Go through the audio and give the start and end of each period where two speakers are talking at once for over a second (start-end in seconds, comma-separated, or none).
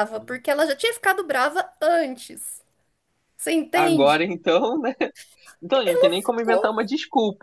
none